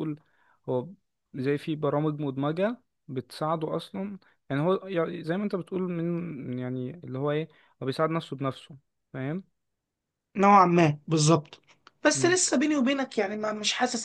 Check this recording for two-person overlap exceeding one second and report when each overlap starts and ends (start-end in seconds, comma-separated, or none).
none